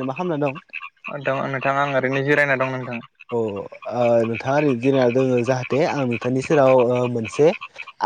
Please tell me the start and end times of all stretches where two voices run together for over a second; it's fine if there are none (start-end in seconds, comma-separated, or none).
none